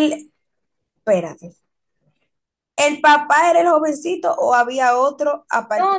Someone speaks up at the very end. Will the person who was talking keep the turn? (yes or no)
no